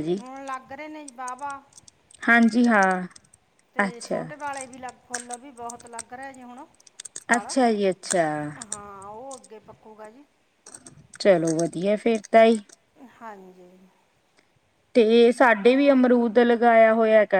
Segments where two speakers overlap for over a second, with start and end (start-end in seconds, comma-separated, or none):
none